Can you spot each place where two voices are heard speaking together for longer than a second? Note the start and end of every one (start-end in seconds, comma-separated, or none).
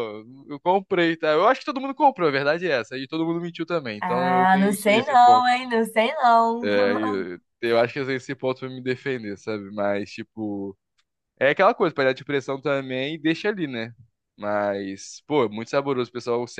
4.0-5.5